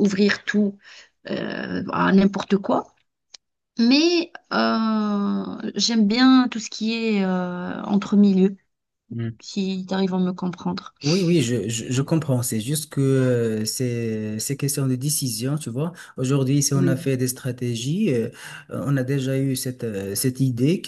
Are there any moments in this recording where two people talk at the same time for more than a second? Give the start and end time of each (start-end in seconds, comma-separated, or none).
none